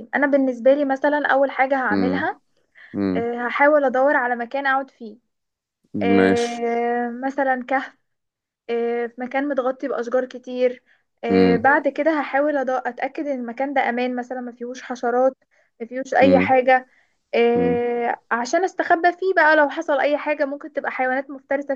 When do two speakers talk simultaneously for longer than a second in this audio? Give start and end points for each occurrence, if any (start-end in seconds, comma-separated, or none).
none